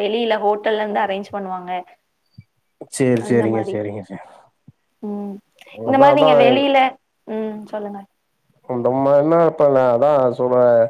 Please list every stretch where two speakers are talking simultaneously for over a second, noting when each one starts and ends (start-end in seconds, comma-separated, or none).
none